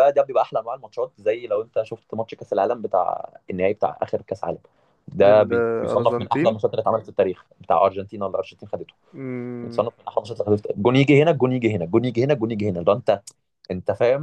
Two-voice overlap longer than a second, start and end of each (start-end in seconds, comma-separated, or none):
5.2-6.6